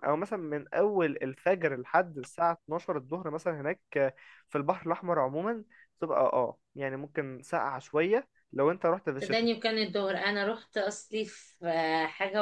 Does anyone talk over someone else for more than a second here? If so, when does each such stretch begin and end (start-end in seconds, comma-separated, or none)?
none